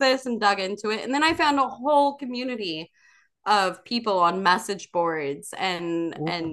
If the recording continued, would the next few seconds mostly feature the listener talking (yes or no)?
no